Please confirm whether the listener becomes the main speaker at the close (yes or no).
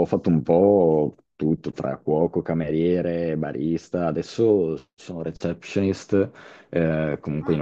no